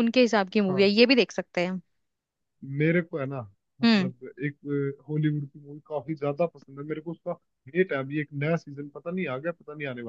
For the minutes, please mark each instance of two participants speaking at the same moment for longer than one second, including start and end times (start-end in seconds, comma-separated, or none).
none